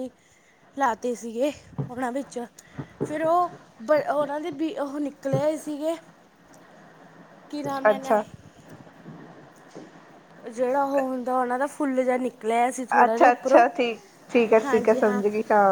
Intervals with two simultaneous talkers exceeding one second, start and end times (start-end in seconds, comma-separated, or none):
none